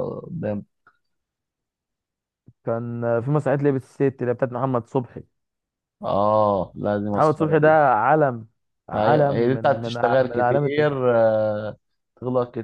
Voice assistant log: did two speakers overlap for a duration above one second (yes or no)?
yes